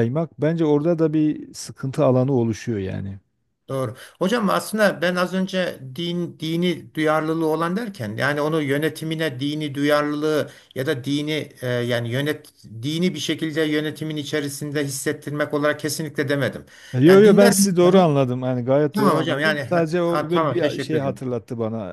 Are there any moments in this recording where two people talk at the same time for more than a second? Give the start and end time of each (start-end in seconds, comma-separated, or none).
17.1-18.3, 18.9-21.2